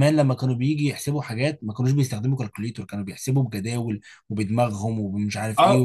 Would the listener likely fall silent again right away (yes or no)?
no